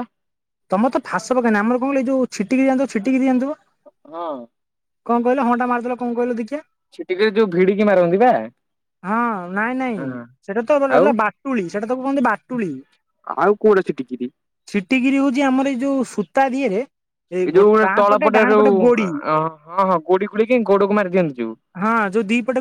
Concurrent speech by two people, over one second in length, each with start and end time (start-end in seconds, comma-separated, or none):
none